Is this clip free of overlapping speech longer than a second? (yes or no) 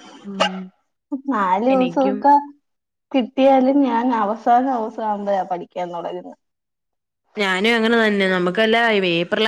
yes